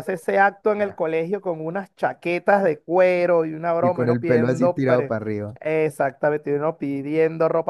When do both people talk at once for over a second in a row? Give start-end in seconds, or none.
3.8-5.2